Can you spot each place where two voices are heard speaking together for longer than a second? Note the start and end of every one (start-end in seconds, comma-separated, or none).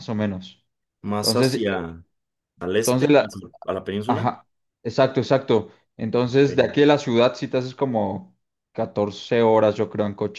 none